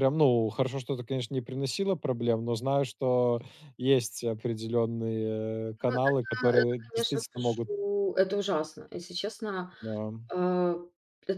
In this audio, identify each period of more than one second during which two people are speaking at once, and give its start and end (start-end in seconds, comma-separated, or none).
5.8-7.7